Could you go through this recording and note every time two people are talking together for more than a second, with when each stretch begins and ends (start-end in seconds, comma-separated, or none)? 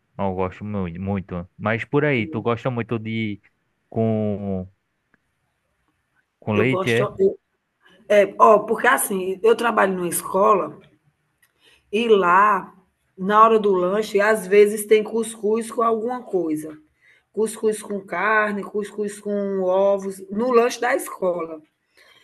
none